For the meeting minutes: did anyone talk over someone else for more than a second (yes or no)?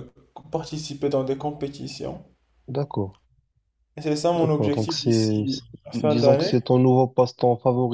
yes